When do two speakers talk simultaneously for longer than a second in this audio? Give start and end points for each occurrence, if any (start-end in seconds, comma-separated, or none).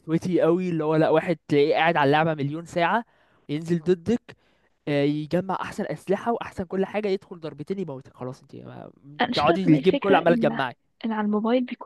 9.3-10.6